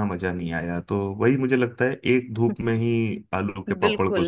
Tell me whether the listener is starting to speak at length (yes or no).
yes